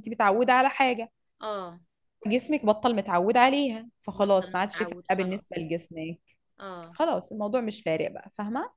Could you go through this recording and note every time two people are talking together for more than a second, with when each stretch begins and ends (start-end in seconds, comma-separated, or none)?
4.1-5.6